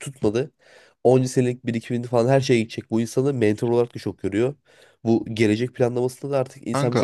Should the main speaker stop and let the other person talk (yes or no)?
no